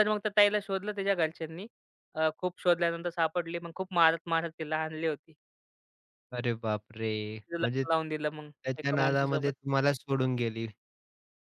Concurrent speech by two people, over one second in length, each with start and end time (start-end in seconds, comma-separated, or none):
7.6-9.5